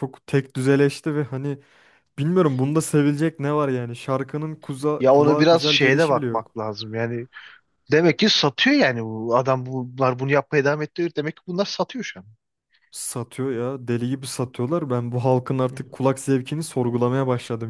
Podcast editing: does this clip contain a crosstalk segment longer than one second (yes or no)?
yes